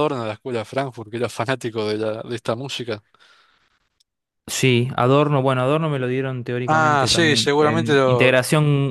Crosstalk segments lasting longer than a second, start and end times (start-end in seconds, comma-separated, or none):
6.7-8.3